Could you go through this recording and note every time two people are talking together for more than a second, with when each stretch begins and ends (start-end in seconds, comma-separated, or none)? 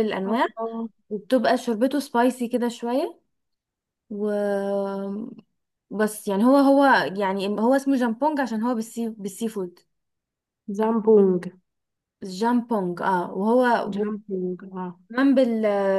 none